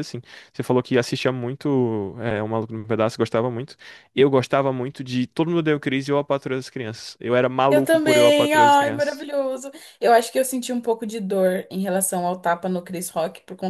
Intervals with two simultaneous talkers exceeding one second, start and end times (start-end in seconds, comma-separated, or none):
7.7-9.2